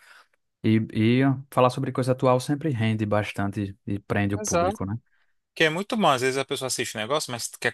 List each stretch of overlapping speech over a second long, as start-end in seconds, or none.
none